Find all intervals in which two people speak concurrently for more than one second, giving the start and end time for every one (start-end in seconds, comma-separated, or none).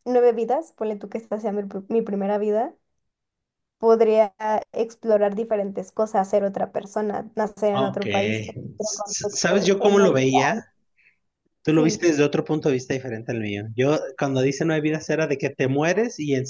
8.8-10.2